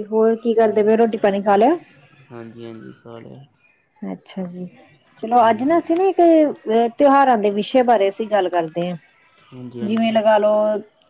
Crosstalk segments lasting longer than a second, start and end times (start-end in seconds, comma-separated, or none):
none